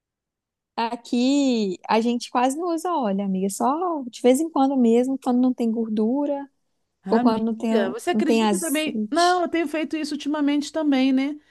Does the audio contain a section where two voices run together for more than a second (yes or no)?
yes